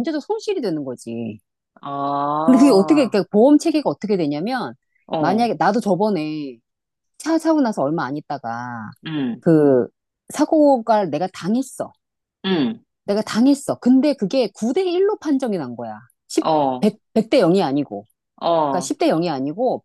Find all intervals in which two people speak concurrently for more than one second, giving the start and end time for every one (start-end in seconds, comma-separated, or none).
none